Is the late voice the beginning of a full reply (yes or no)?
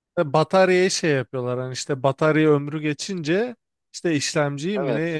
no